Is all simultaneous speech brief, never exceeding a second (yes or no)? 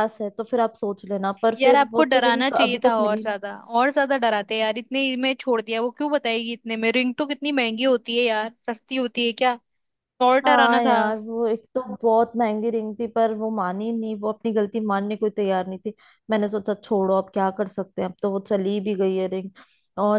no